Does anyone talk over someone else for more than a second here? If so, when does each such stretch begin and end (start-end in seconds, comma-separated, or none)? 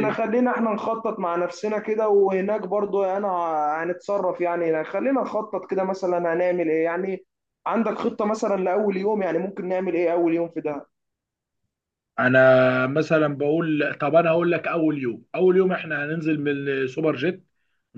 none